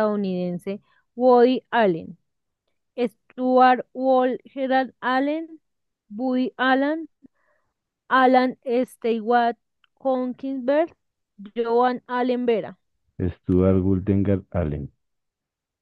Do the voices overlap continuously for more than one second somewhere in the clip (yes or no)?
no